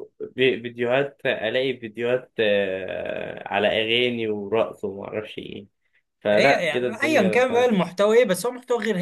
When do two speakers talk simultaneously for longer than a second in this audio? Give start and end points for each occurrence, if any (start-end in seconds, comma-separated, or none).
6.3-7.7